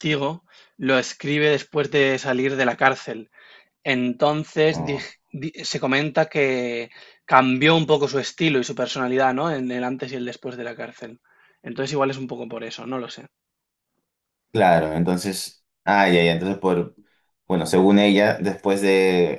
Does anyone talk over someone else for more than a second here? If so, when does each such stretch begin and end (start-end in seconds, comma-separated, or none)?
none